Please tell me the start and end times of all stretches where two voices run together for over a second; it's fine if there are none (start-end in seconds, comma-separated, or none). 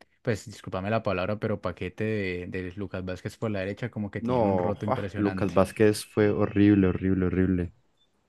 4.2-5.6